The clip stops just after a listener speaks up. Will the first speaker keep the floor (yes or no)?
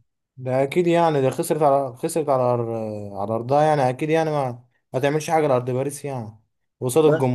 yes